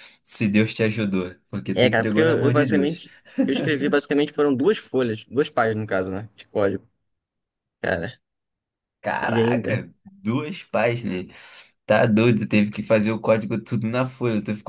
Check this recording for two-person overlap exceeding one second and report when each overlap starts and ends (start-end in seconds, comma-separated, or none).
1.7-3.0